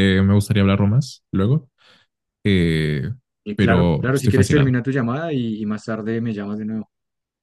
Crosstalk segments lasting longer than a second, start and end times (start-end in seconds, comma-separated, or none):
3.6-4.8